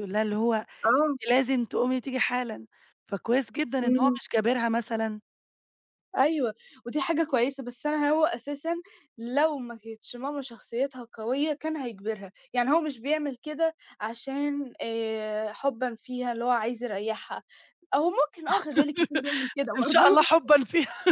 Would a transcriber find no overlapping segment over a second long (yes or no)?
yes